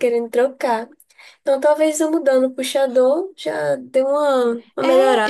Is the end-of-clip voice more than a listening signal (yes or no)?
yes